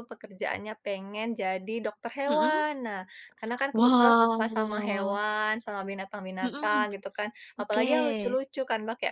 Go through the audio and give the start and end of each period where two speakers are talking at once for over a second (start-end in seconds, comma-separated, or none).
3.8-5.2